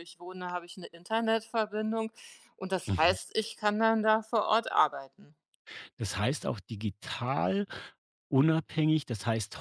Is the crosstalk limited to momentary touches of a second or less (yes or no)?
yes